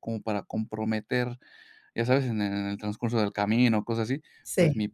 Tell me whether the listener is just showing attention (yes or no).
yes